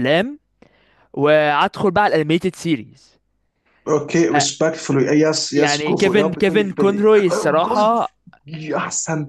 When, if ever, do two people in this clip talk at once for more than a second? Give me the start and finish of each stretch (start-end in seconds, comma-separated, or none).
5.5-7.9